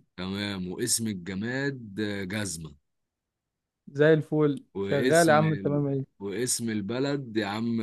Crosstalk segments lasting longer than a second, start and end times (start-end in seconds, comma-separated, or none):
4.7-6.2